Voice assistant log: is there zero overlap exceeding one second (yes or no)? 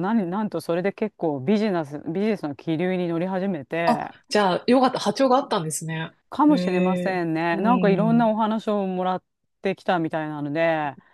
no